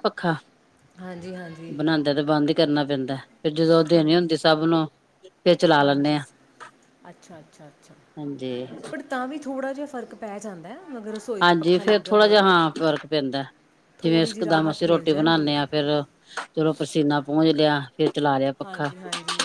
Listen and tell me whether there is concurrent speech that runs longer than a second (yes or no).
yes